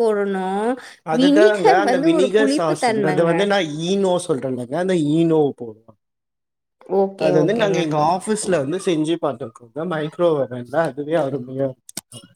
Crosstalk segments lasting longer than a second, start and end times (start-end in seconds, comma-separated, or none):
1.2-3.3